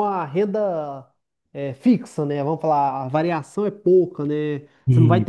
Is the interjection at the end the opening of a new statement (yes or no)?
no